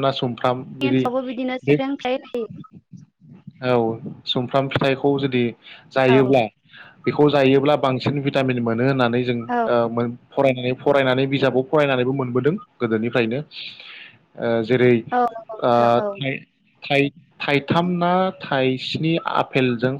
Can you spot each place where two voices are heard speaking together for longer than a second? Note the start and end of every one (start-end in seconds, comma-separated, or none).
none